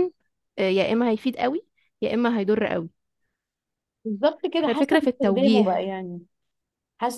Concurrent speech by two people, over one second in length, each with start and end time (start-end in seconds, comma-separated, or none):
4.7-5.9